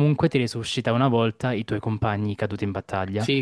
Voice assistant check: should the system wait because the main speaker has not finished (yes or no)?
no